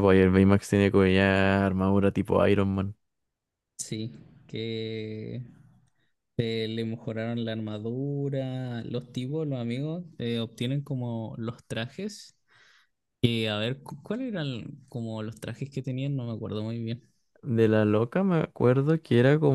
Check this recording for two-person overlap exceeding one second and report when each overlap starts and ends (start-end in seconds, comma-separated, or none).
none